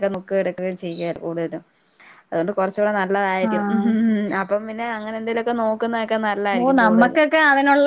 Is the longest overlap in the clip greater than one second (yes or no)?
no